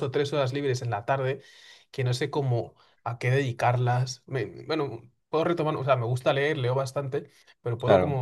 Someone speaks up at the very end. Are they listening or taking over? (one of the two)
listening